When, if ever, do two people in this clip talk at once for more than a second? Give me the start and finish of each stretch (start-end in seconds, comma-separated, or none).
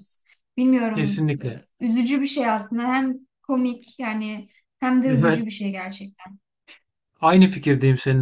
none